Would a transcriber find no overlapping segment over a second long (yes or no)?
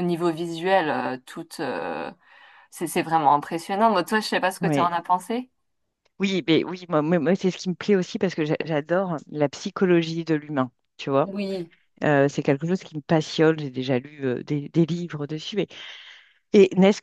yes